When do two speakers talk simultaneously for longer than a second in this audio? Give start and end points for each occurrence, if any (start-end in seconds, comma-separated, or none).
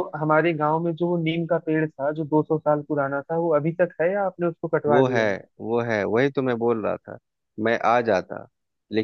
none